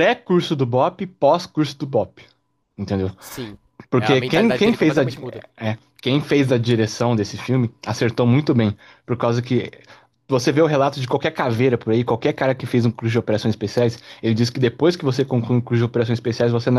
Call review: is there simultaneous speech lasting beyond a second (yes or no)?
yes